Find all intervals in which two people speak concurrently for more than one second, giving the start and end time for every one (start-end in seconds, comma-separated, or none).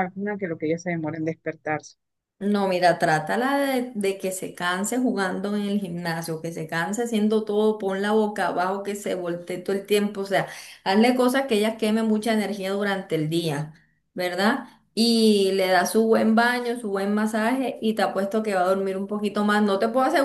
none